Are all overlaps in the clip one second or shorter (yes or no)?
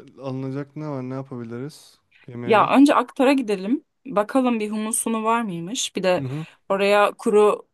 yes